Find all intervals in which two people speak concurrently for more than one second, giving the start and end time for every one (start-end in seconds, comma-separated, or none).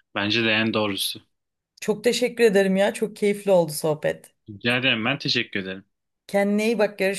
none